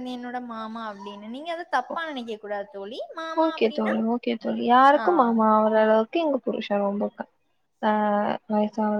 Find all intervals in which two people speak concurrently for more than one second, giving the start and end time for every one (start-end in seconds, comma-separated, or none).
none